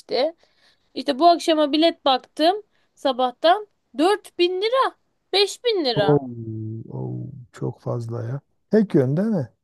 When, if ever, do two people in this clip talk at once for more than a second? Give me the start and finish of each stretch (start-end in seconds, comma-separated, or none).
none